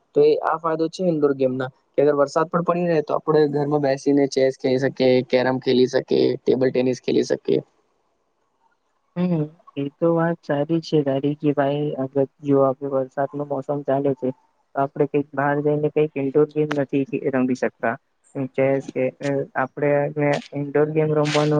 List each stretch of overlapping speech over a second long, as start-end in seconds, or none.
none